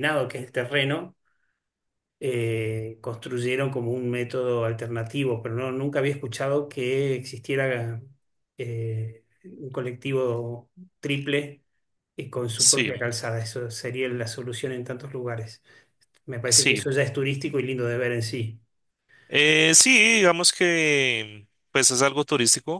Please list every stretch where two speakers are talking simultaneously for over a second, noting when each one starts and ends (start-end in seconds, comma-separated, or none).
none